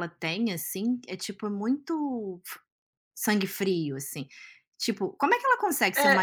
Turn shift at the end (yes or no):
no